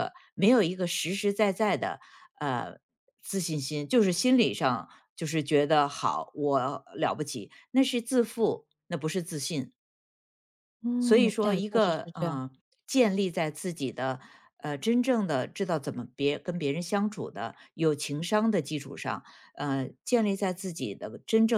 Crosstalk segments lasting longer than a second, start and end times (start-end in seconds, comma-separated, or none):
11.0-12.4